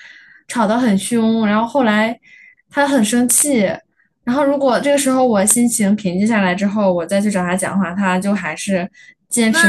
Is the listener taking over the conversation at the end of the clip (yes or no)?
yes